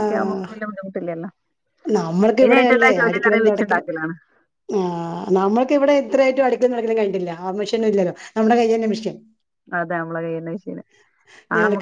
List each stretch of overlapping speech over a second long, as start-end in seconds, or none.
2.4-3.9